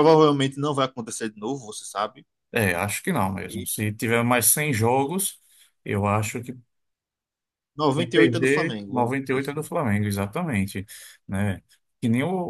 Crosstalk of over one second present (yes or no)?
yes